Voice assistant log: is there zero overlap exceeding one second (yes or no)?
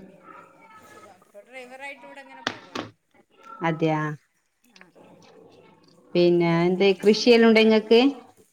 no